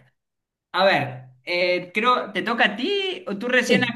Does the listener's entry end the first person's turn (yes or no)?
no